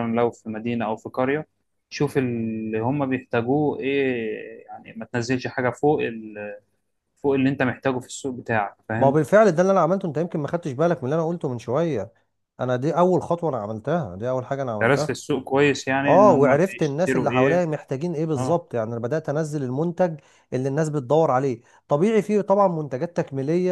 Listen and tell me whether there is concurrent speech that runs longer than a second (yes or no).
yes